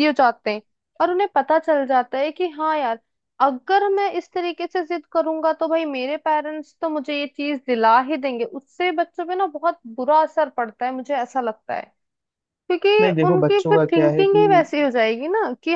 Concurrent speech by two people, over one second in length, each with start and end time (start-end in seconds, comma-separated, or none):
13.0-14.7